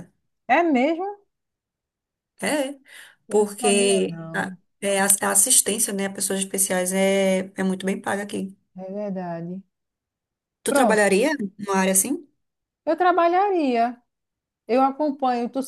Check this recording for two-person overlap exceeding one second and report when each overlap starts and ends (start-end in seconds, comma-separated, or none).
3.3-4.6